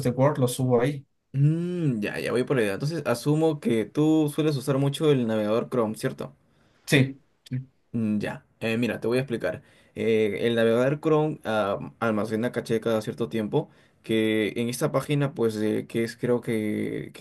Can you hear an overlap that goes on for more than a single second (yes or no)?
no